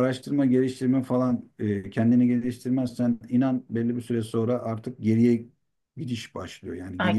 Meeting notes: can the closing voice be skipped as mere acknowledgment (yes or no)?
no